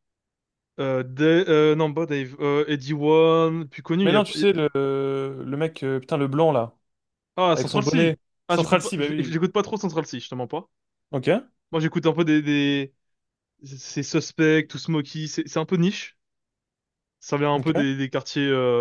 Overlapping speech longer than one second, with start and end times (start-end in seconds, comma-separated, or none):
7.5-9.4